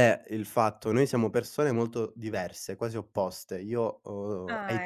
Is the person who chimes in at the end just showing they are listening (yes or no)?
yes